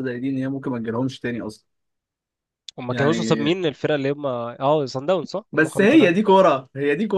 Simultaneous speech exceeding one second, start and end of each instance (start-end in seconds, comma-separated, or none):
none